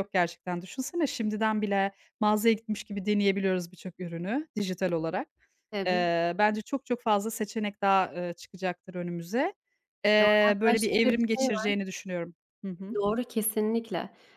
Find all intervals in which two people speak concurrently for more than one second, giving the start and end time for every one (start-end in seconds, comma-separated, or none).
10.2-11.7